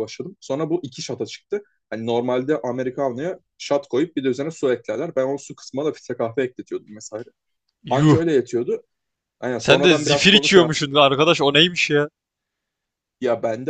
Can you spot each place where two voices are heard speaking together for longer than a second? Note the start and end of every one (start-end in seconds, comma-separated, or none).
9.6-10.9